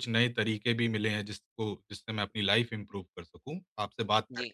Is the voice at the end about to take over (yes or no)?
no